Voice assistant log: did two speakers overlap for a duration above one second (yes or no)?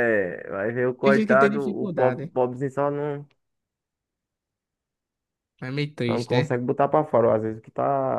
yes